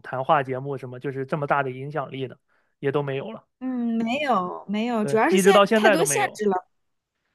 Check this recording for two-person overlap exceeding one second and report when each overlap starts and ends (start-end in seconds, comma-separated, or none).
5.0-6.4